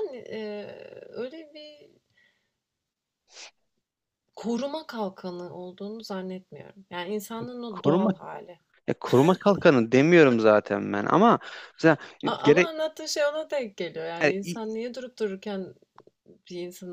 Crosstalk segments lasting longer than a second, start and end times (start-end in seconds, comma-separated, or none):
none